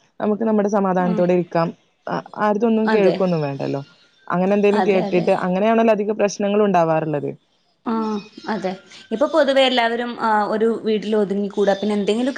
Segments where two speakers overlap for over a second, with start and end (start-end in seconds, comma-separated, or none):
none